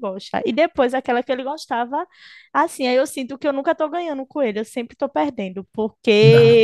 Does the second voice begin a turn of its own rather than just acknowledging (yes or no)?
no